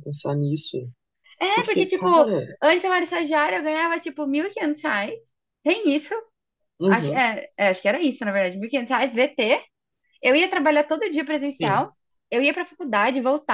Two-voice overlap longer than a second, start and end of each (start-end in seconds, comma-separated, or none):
none